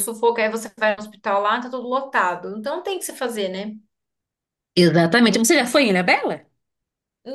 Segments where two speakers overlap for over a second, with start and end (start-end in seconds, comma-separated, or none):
none